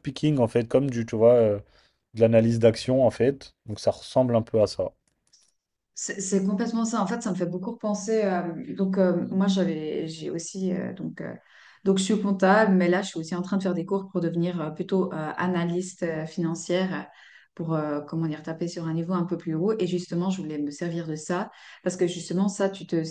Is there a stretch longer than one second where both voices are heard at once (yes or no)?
no